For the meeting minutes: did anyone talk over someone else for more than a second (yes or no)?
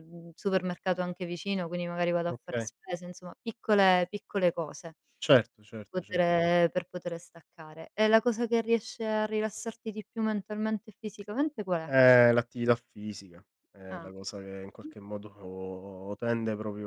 no